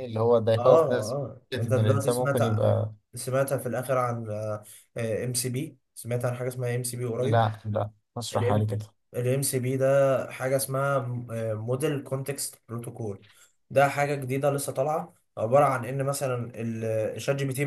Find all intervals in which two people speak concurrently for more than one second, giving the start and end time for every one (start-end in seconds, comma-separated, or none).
0.6-2.4